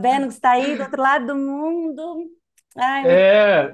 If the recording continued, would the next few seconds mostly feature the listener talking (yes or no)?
yes